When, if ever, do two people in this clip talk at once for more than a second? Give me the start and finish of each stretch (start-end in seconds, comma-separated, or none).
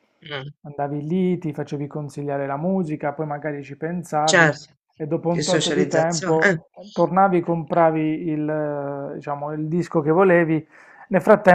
5.3-6.6